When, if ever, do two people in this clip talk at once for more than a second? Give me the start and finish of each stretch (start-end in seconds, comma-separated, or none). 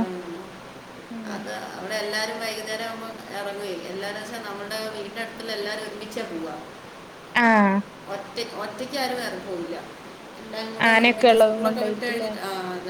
10.9-12.3